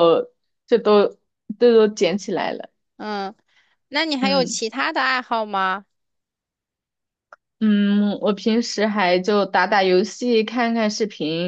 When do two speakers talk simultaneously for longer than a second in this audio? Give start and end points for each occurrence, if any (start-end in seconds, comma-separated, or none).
none